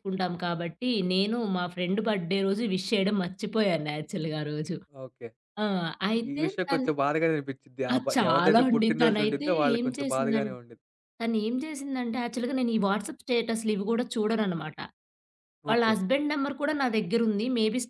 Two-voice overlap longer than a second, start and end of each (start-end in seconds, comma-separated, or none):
7.9-10.4